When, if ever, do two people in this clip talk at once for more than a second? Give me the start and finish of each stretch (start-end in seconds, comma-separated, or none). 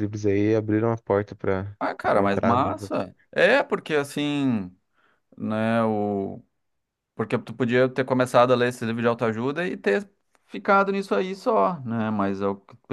1.8-3.1